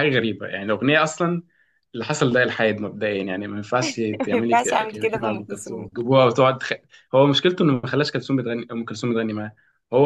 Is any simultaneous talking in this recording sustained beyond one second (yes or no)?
yes